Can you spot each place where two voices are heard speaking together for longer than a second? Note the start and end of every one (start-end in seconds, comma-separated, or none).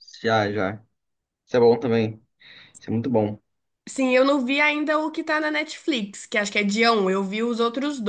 none